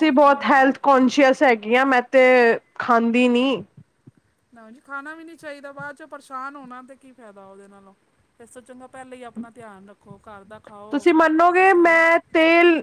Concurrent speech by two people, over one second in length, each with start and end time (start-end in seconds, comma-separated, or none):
none